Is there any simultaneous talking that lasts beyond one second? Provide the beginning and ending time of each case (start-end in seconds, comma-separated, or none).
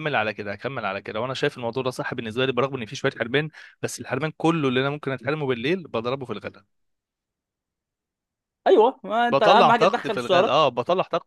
9.3-10.6